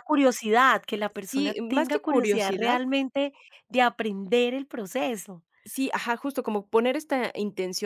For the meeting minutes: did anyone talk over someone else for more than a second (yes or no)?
yes